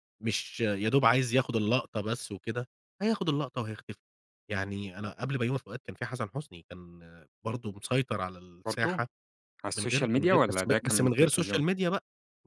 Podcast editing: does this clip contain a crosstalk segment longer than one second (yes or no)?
yes